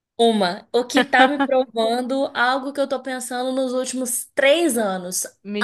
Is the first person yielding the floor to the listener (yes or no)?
no